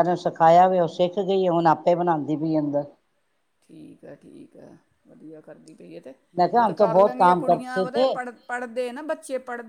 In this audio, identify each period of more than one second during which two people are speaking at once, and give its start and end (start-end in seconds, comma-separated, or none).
6.6-8.1